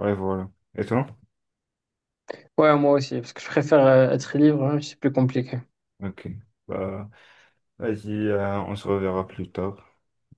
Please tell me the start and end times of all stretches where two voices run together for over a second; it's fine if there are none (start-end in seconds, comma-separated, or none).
none